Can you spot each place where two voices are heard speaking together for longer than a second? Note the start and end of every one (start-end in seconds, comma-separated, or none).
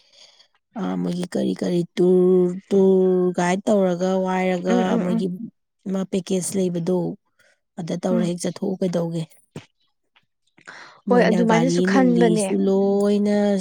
11.1-12.6